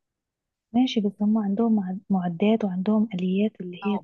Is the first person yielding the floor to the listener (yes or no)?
yes